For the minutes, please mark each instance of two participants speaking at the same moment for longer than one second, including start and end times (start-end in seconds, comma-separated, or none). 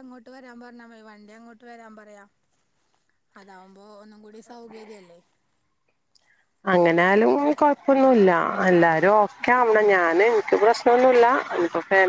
none